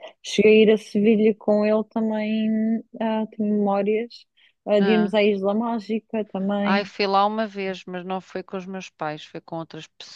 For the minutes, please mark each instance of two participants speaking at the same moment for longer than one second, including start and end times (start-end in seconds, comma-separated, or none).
none